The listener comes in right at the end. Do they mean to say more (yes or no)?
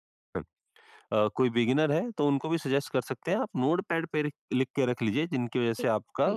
no